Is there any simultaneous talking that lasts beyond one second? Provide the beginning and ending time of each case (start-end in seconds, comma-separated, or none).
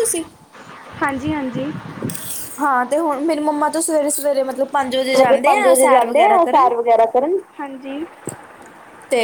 5.2-6.7